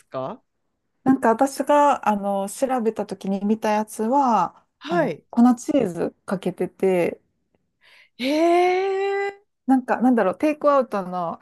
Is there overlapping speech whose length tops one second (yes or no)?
no